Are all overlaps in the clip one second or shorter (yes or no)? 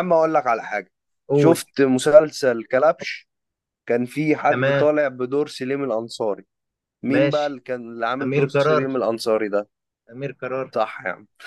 yes